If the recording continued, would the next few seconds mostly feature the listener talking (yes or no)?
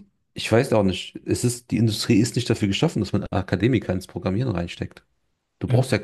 no